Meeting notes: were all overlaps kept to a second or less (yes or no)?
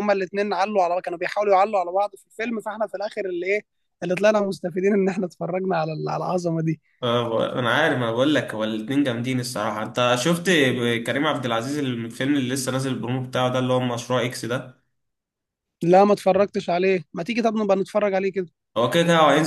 yes